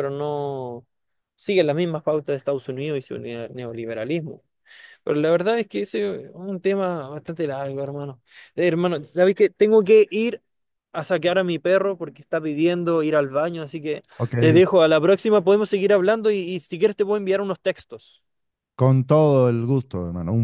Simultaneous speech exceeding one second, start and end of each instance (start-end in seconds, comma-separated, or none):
none